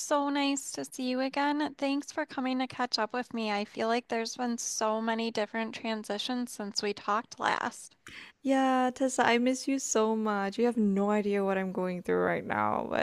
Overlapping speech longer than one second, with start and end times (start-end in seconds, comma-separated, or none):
none